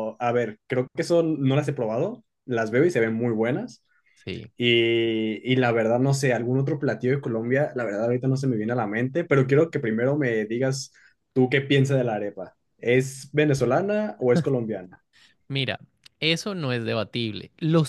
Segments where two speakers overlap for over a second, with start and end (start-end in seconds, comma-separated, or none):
none